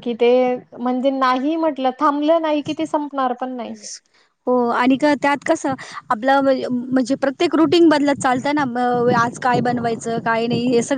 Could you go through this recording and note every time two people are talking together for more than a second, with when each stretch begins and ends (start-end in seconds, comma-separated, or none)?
none